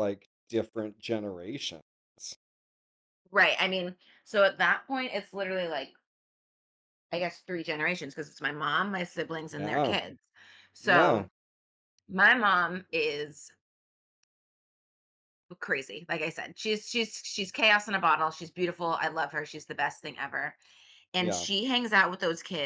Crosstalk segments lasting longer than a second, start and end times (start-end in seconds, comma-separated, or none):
none